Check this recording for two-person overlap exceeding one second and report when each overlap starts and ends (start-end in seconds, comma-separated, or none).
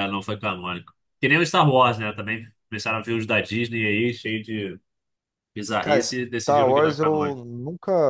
5.8-7.4